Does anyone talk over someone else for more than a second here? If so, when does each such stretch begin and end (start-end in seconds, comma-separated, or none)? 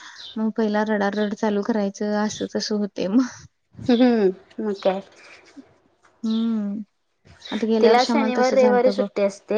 7.8-9.1